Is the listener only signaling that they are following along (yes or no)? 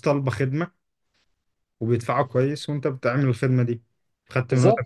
yes